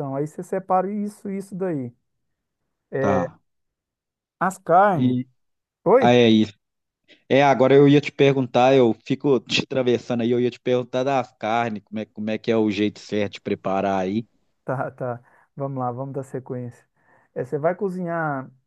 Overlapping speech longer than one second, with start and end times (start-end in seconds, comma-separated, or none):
none